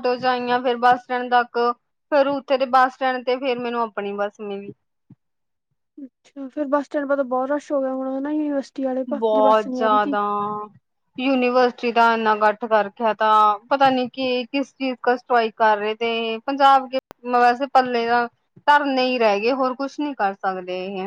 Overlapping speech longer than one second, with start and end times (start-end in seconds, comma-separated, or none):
none